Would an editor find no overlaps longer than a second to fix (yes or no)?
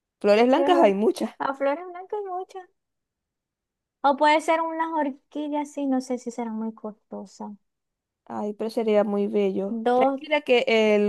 yes